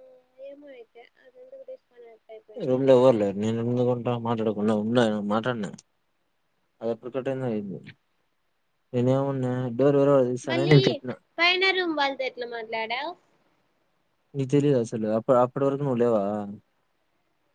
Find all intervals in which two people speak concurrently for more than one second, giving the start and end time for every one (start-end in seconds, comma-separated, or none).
none